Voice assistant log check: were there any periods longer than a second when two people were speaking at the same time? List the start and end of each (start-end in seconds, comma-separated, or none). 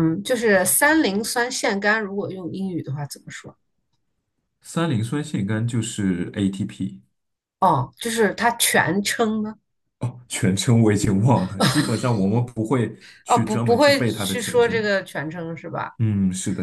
13.3-14.8